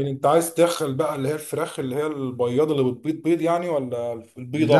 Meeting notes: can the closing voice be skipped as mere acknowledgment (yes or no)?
no